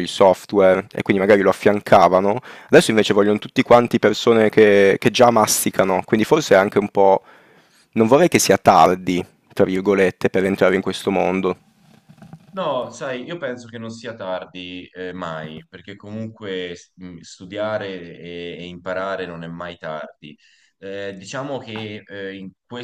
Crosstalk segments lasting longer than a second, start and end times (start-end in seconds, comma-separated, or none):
none